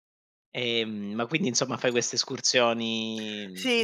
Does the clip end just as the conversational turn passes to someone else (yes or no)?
yes